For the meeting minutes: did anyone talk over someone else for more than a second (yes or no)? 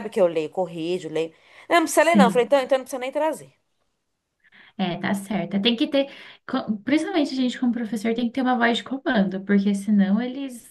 no